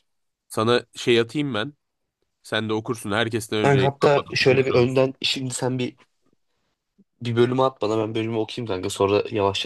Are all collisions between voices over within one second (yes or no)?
no